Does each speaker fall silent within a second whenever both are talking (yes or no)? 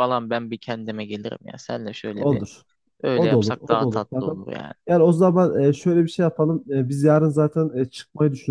no